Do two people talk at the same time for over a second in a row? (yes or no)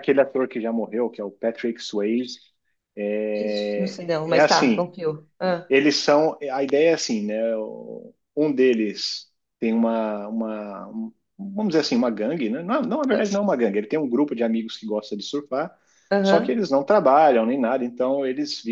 yes